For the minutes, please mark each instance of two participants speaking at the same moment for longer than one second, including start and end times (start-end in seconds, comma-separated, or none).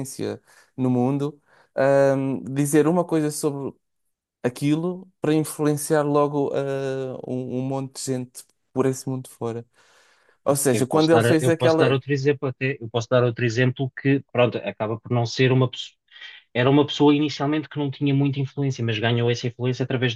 10.7-12.0